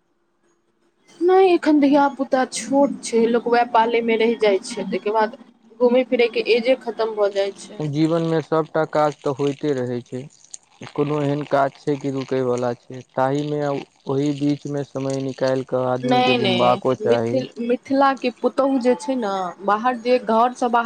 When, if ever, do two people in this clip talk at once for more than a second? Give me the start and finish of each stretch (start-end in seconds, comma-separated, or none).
16.1-17.4